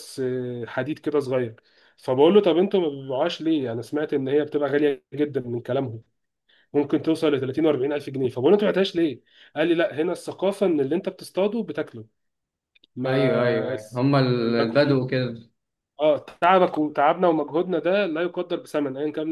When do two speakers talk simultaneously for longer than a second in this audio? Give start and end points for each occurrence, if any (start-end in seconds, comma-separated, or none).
13.1-15.0